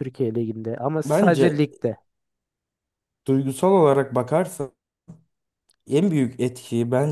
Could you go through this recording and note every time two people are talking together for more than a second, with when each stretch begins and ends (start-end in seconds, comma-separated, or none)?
none